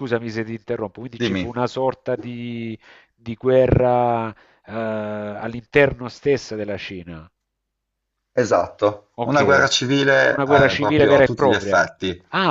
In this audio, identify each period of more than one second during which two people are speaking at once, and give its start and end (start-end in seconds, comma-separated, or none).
10.3-11.9